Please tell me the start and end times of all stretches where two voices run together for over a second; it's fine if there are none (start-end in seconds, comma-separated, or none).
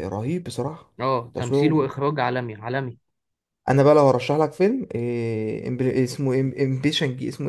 none